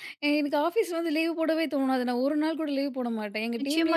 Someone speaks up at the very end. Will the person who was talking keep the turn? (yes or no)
no